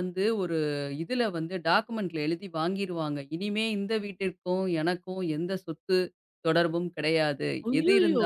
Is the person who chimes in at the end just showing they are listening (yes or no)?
yes